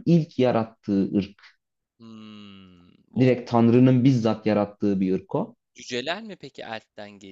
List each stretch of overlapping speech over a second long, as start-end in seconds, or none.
none